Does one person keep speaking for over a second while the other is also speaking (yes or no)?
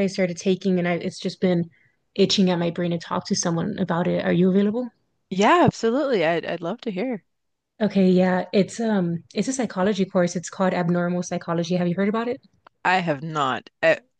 no